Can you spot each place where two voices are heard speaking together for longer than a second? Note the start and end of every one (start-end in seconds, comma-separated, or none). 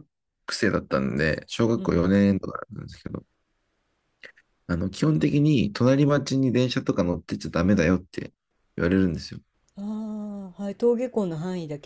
none